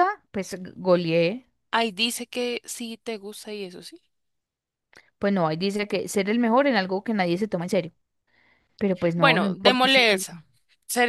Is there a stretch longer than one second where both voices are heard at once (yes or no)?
yes